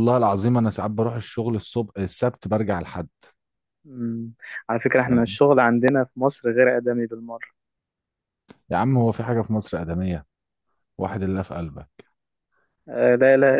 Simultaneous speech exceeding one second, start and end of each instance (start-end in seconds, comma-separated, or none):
none